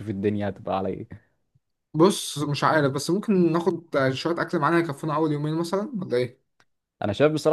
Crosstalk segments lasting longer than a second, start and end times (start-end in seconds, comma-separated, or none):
none